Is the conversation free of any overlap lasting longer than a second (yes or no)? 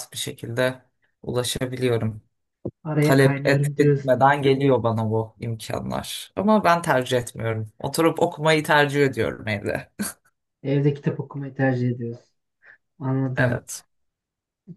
no